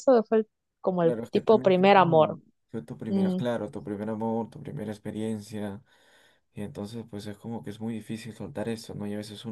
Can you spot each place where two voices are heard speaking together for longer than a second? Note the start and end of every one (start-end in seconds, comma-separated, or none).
1.0-2.4